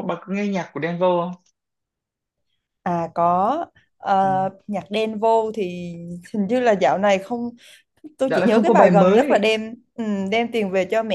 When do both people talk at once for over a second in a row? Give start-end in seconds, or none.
8.3-9.5